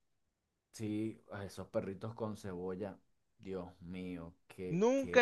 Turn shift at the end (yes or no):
yes